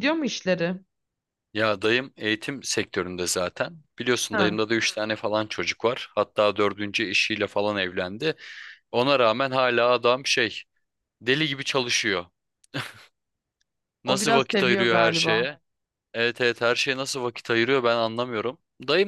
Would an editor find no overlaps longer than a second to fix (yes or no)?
no